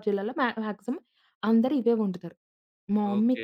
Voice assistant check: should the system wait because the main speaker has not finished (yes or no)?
no